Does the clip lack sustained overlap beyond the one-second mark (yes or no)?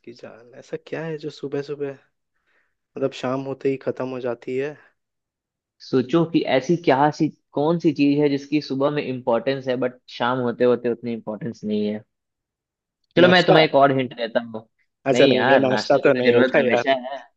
no